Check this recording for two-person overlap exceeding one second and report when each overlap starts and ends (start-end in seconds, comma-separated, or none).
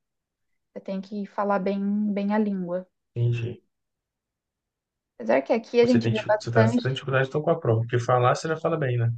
5.8-7.0